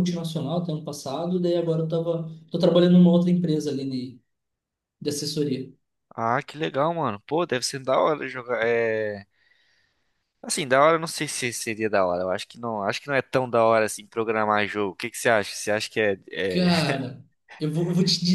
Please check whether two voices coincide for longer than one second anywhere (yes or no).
no